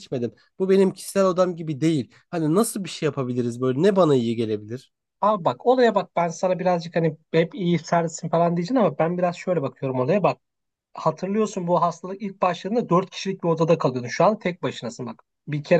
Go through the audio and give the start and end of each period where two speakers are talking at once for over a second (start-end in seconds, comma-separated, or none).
none